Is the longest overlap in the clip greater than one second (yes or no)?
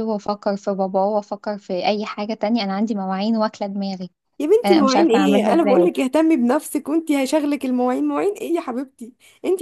yes